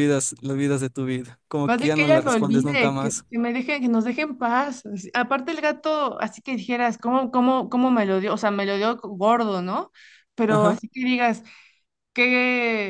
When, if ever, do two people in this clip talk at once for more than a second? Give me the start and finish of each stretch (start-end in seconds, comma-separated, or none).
1.7-3.2